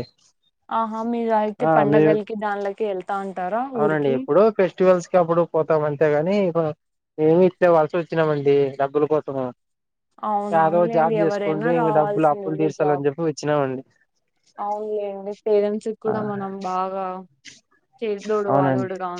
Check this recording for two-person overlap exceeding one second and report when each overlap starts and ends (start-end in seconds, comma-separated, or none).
10.6-13.0